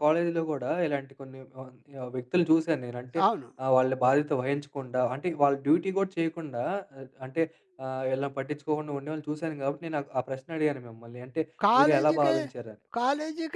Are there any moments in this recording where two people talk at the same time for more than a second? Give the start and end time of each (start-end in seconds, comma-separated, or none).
none